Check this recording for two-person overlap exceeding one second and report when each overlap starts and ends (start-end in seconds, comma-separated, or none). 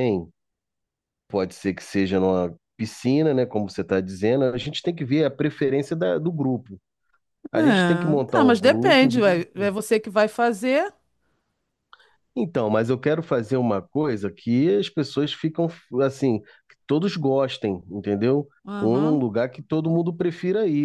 8.3-9.7